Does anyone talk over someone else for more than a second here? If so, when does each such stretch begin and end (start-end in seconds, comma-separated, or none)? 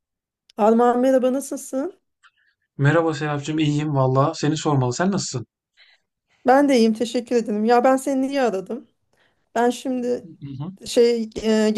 none